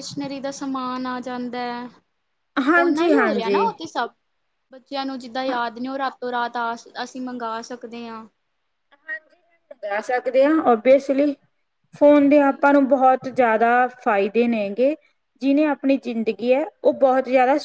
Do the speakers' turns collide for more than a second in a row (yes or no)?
yes